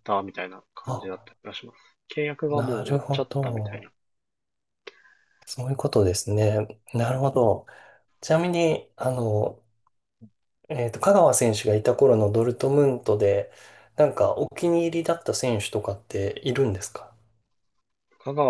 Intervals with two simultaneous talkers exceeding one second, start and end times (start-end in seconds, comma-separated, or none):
2.5-3.9